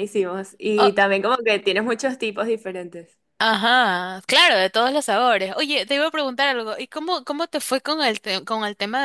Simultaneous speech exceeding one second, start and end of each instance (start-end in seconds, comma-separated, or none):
none